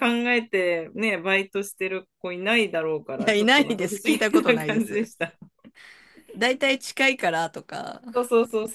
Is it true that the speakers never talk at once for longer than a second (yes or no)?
no